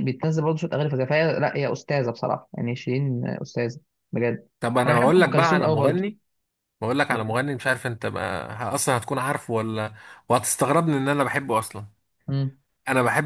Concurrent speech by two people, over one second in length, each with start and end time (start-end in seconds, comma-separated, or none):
4.8-6.0